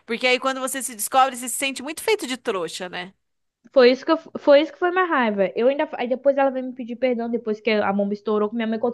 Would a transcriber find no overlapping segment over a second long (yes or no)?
yes